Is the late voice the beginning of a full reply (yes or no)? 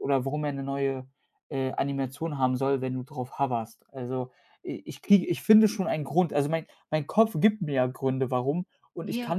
no